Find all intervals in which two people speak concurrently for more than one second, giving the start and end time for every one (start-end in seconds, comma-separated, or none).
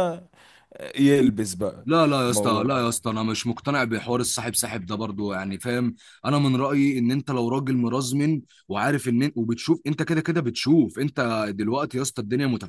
none